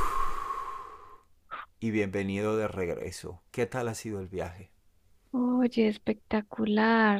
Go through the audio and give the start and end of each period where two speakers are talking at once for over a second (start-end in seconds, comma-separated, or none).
none